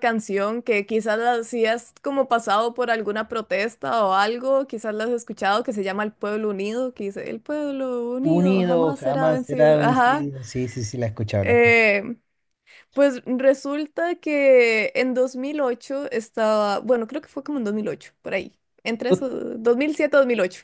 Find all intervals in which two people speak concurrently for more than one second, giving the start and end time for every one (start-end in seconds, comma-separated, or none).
8.2-10.3